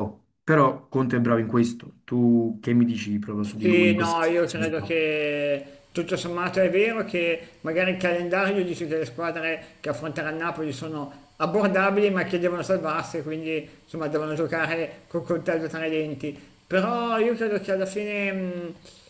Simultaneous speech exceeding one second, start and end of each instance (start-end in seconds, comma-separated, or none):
3.6-4.9